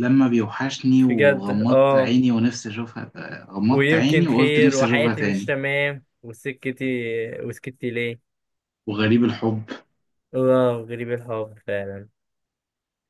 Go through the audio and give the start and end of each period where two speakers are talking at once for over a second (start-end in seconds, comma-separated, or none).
1.0-2.2, 3.7-5.5